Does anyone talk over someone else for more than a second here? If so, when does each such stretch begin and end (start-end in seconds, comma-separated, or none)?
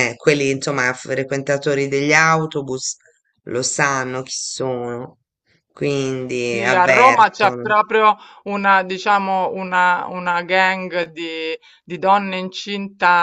6.3-7.7